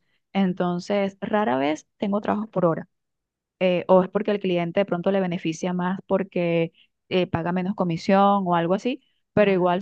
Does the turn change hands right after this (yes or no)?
no